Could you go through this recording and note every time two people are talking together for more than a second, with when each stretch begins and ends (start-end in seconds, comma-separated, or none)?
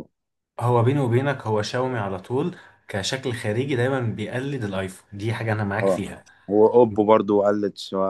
none